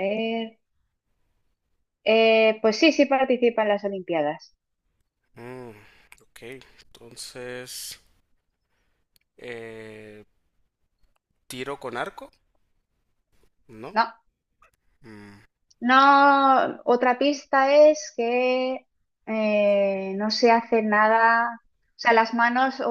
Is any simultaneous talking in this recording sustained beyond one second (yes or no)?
no